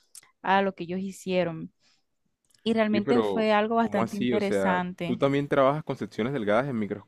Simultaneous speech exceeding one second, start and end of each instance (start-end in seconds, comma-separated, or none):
2.9-5.2